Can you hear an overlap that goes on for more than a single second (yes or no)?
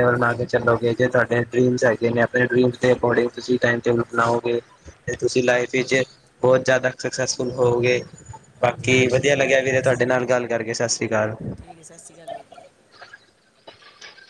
yes